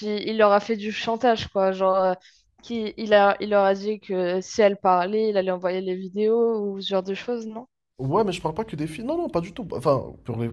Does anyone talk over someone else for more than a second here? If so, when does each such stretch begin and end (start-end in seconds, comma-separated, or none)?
none